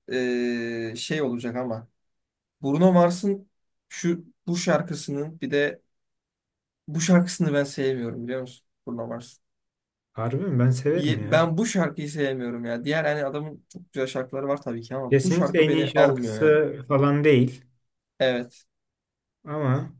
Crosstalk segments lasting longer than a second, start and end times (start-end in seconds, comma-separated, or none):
15.1-16.6